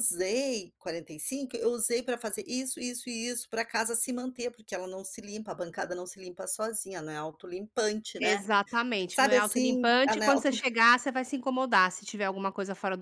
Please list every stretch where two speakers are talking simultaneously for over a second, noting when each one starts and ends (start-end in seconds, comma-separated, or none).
9.1-10.6